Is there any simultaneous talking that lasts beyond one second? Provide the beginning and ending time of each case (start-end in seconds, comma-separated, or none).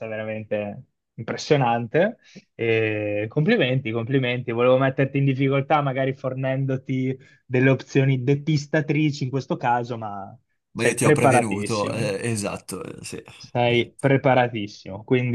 10.7-12.1